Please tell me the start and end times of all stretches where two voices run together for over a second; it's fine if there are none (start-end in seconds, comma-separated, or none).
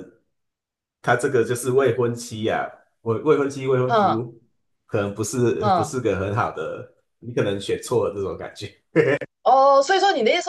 none